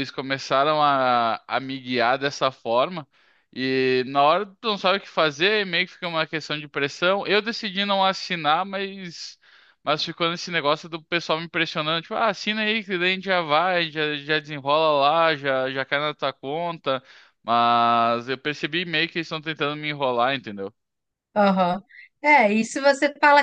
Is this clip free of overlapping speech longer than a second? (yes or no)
yes